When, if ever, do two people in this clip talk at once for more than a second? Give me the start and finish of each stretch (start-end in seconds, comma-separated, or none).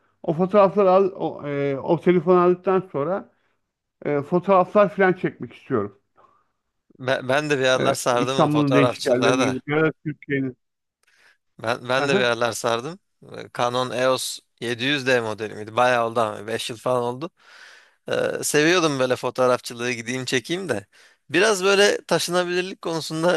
7.8-9.6